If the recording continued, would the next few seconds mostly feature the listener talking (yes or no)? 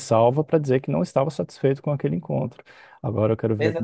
yes